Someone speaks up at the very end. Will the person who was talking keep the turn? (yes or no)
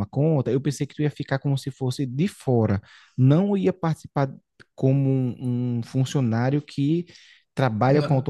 yes